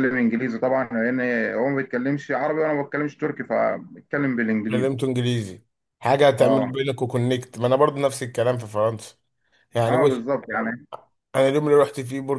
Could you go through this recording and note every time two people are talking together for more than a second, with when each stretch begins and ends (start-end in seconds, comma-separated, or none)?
none